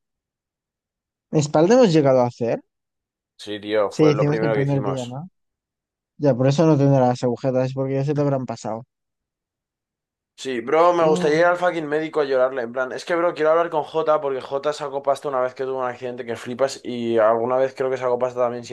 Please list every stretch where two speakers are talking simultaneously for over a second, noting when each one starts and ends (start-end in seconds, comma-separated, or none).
3.9-5.2